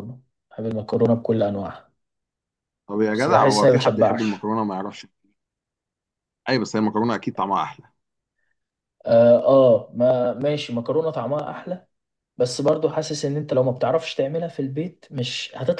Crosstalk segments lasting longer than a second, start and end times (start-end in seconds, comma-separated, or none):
3.1-4.4